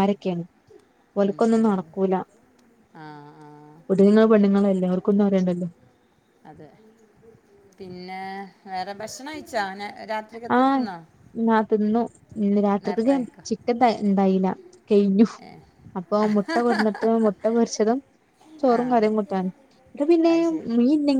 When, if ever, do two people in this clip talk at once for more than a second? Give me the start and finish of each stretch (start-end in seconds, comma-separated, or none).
none